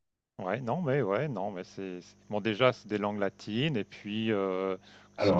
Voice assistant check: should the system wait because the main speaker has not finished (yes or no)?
yes